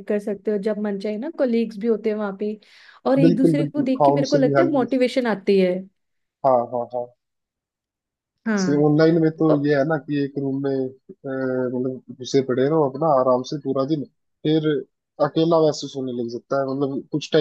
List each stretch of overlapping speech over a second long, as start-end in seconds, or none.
3.2-4.8